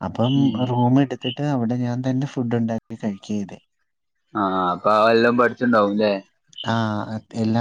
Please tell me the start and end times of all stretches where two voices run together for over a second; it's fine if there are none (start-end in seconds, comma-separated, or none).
none